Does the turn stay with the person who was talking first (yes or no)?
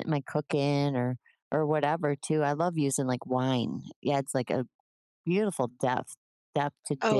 no